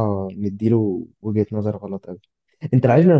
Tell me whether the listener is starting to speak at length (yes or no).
no